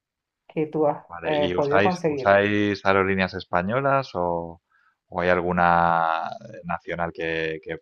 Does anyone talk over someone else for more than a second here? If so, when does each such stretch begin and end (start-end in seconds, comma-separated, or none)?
1.1-2.4